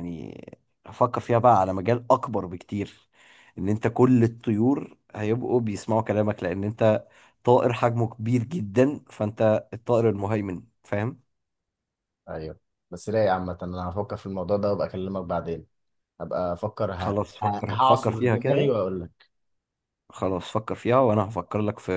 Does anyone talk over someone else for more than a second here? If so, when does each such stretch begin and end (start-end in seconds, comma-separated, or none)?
17.0-18.7